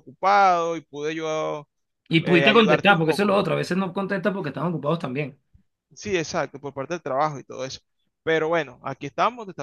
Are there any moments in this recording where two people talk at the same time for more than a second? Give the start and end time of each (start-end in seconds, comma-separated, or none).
2.2-3.4